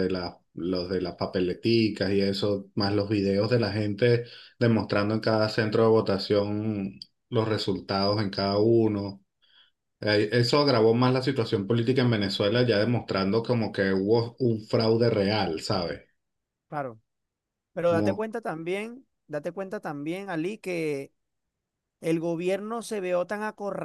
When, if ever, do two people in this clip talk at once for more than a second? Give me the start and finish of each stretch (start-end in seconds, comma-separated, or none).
none